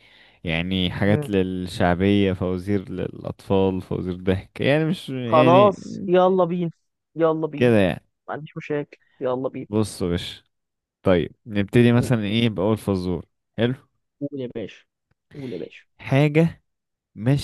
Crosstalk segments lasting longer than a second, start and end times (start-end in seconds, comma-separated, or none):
none